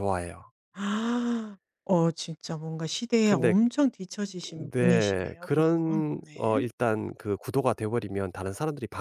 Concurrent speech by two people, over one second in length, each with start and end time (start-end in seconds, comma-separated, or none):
4.7-6.6